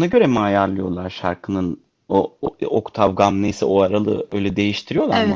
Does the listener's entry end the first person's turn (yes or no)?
yes